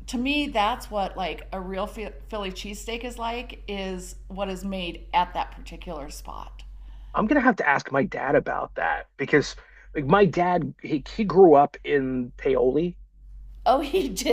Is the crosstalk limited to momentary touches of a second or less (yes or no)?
yes